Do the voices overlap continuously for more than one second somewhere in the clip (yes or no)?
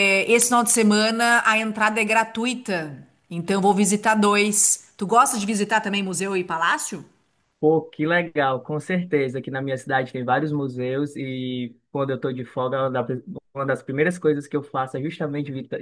no